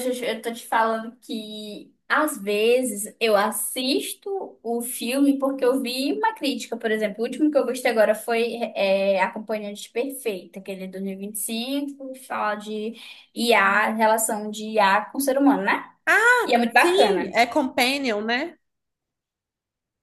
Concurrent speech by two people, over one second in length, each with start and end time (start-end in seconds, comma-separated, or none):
none